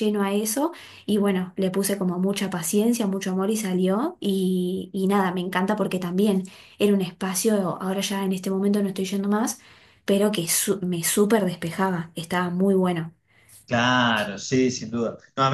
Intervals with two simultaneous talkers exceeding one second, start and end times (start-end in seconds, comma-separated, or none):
none